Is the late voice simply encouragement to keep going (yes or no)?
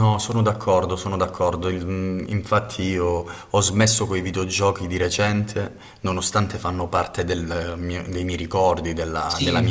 no